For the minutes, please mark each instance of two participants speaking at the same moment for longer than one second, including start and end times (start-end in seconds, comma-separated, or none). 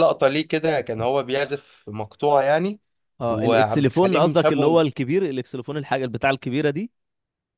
3.3-4.8